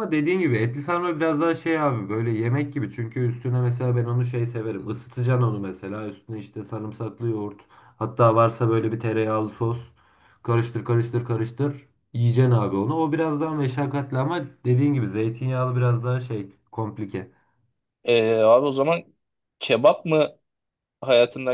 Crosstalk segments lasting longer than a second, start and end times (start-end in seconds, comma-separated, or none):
none